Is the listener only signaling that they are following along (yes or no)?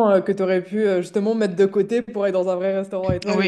no